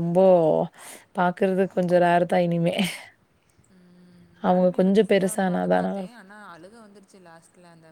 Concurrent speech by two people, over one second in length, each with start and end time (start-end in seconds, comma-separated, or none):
4.5-6.2